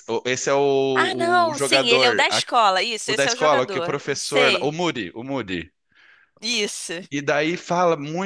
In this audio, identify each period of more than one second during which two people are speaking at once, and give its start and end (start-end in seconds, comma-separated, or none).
0.9-2.4, 3.0-4.7